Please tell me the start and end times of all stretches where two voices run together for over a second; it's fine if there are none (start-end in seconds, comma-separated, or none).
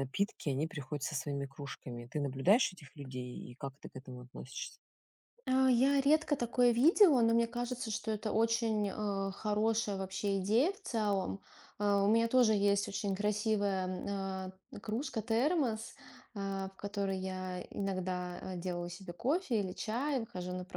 none